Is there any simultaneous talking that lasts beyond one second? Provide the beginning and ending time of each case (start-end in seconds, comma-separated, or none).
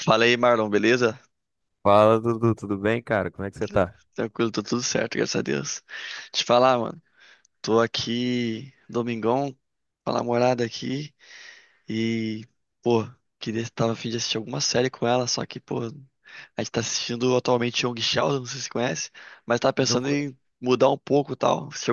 none